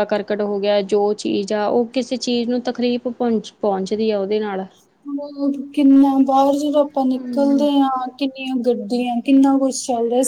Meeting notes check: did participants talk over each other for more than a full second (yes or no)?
no